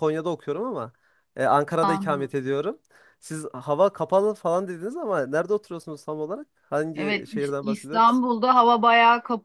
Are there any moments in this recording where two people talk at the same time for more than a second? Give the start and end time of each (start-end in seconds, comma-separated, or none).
7.0-8.2